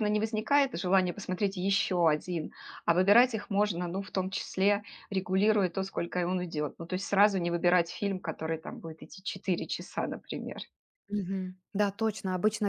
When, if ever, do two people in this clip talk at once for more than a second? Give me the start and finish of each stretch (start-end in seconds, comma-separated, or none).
none